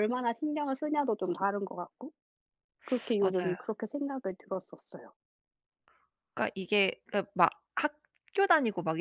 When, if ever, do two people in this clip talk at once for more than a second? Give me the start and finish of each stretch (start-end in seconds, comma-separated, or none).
none